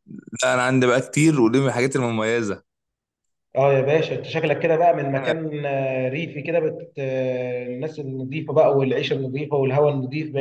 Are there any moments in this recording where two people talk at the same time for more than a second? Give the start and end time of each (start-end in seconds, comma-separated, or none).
none